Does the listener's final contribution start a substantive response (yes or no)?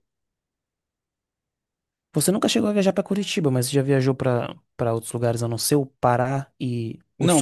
yes